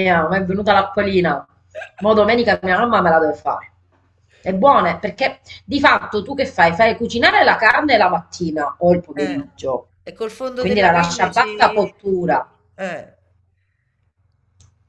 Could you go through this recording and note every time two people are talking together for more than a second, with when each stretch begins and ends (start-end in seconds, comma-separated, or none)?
10.6-11.9